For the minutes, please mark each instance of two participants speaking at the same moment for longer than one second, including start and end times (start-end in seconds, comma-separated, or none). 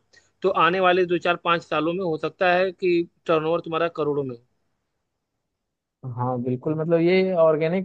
none